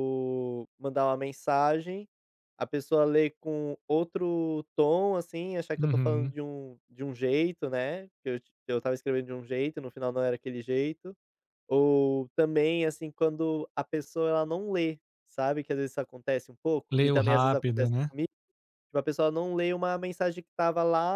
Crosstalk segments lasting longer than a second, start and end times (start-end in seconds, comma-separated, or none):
16.9-18.1